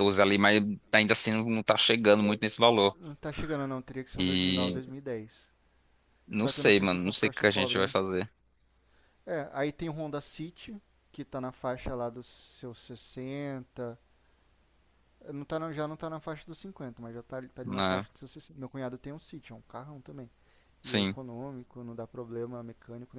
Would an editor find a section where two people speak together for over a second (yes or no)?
yes